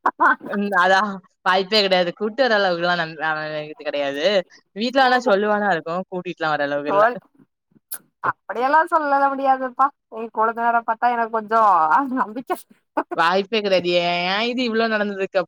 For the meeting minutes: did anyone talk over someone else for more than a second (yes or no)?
no